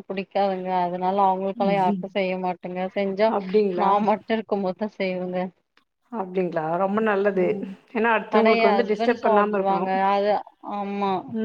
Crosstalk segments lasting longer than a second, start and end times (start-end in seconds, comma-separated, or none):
8.4-9.8